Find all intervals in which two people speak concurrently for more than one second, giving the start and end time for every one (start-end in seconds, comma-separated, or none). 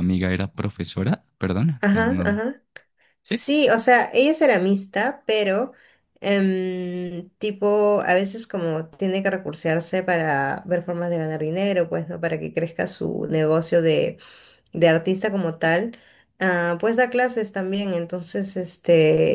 none